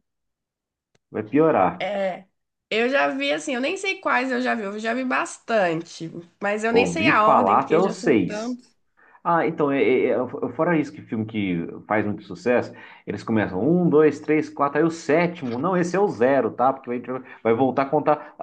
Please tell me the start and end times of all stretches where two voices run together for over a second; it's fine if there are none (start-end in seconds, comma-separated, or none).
6.7-8.6